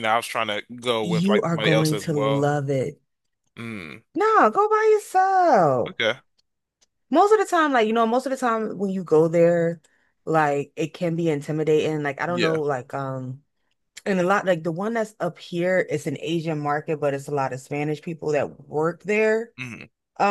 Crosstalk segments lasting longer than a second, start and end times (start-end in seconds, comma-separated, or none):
1.0-2.5